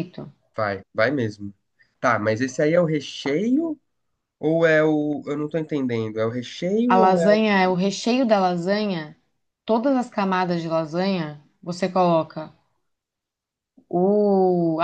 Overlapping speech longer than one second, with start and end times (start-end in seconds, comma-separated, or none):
none